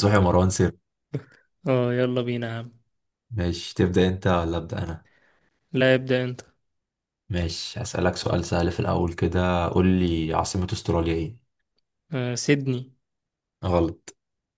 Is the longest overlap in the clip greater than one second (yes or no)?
no